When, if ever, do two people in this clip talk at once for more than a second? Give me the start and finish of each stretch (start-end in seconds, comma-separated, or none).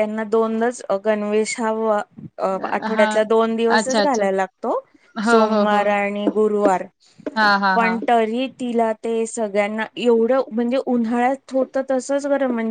none